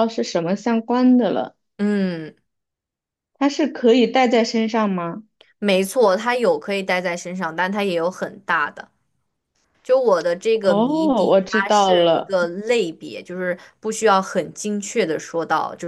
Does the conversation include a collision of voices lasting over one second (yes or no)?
yes